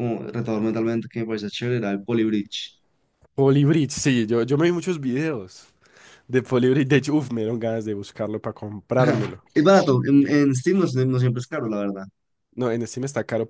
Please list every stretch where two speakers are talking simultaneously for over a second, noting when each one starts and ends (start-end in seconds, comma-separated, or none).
none